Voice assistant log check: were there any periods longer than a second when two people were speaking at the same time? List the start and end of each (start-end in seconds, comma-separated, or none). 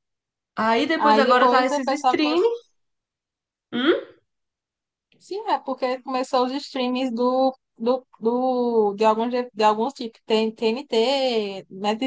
0.9-2.4